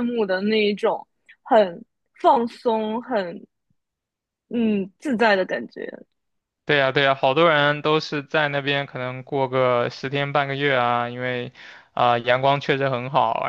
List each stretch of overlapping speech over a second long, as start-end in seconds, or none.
none